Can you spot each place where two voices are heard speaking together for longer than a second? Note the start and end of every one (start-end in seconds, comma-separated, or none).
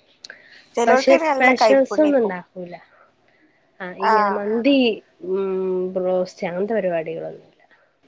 0.8-2.3